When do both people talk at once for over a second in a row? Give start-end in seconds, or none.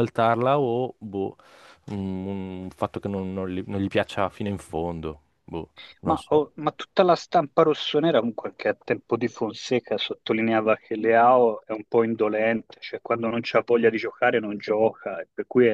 none